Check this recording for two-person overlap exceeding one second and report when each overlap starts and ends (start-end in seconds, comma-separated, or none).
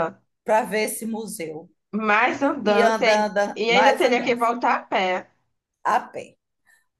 2.6-4.4